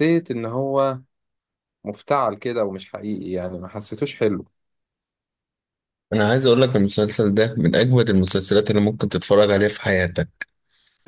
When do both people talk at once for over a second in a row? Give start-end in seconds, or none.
none